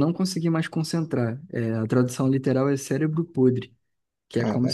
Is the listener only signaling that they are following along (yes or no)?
yes